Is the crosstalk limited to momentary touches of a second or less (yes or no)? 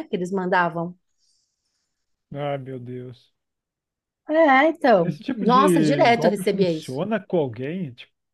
no